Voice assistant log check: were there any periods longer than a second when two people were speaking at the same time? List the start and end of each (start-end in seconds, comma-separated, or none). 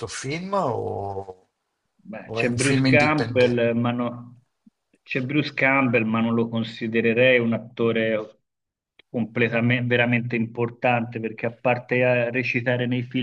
2.2-3.6